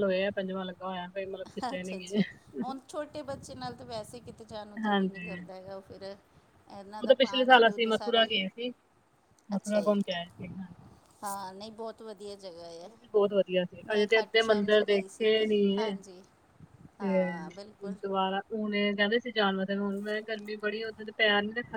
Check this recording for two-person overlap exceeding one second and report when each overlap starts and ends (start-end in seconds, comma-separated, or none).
7.0-8.2, 13.9-15.8